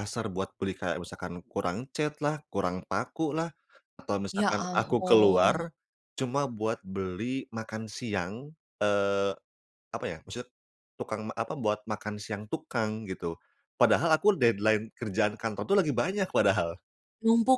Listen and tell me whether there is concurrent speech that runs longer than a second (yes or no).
yes